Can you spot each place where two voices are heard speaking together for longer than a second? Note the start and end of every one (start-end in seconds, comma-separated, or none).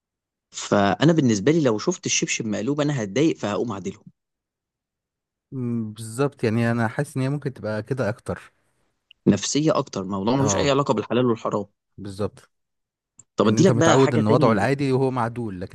13.4-14.7